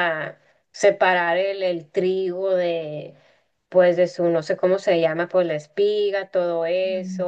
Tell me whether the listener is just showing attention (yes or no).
yes